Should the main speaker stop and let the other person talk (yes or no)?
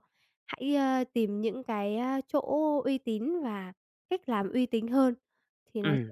yes